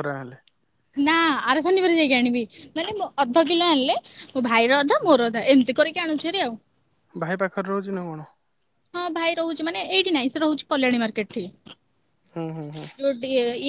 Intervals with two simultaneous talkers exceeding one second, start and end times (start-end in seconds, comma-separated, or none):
none